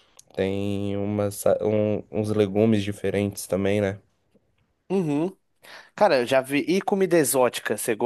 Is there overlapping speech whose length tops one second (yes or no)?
no